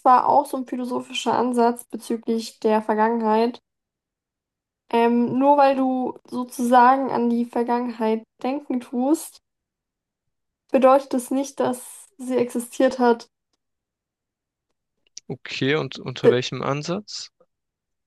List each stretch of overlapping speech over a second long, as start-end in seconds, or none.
none